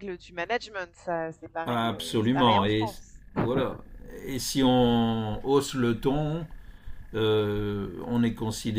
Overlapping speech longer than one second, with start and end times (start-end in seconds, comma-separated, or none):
1.6-2.9